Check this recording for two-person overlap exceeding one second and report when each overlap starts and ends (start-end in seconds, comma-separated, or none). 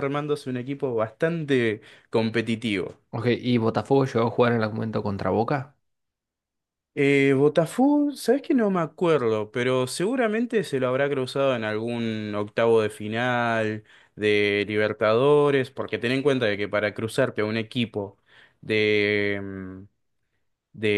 none